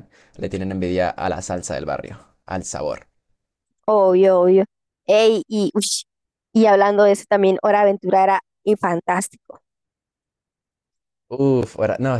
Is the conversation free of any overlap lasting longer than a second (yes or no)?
yes